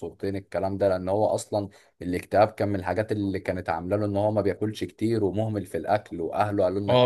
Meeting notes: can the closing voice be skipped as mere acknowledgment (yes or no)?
no